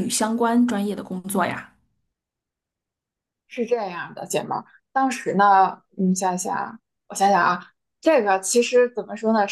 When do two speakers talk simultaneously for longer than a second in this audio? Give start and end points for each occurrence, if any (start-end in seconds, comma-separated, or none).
none